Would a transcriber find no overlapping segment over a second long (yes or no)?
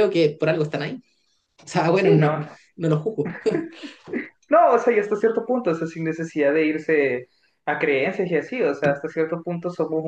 yes